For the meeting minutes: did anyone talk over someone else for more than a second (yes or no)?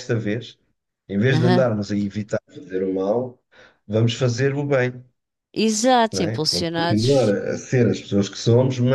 yes